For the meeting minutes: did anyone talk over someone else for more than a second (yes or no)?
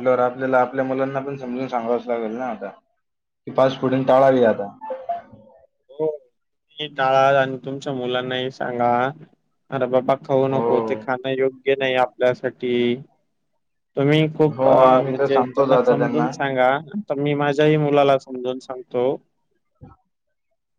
yes